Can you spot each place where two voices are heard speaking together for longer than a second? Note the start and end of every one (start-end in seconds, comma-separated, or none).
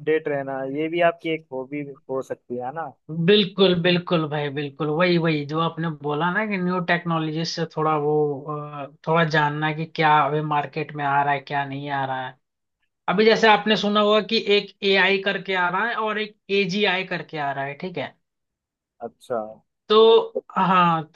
none